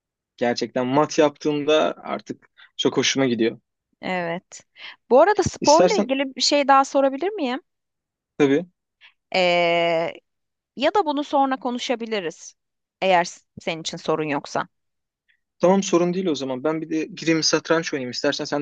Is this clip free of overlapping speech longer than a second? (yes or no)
yes